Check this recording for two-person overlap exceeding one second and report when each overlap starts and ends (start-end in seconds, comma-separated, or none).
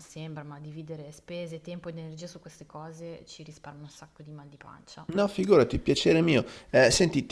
none